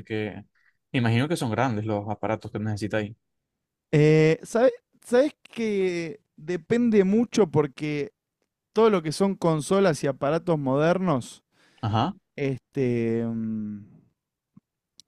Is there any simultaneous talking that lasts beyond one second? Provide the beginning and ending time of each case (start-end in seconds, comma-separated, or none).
none